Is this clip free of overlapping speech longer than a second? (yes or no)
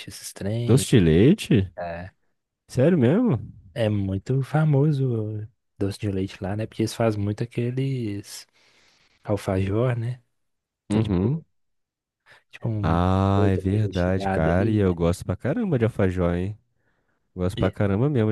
no